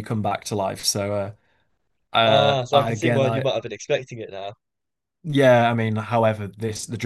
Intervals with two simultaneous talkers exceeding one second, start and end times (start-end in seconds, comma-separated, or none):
2.2-3.5